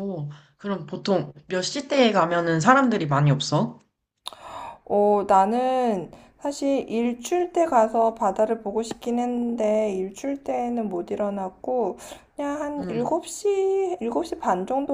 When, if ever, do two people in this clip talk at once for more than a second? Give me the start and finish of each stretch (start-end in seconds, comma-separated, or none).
none